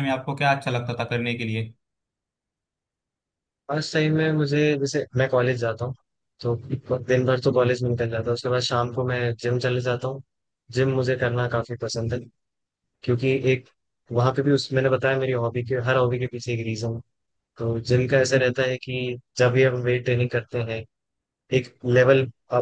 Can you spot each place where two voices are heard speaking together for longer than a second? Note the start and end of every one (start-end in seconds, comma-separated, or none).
none